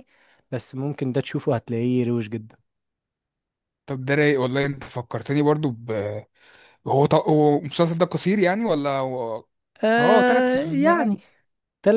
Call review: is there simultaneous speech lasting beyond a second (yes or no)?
yes